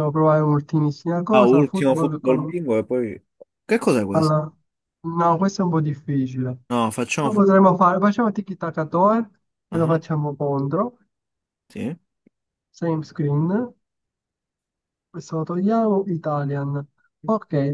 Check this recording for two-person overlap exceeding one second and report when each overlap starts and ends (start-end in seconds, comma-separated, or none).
1.3-2.6